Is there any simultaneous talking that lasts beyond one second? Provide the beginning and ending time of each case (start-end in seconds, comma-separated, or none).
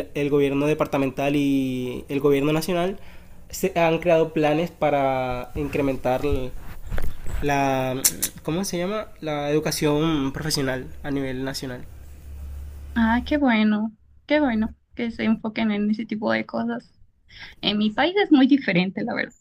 none